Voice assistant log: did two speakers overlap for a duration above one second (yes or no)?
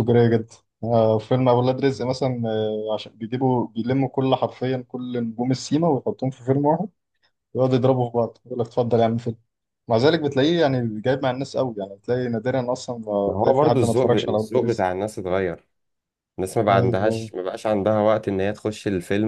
yes